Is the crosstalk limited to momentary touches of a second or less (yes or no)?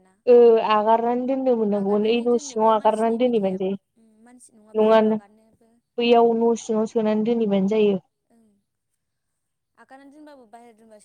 no